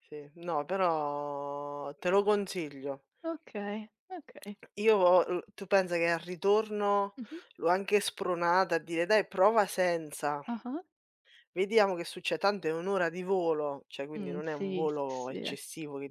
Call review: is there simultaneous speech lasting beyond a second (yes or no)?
yes